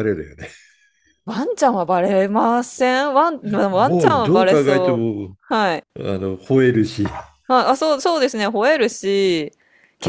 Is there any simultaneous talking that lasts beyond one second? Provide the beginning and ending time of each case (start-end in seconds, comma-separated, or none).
3.7-5.1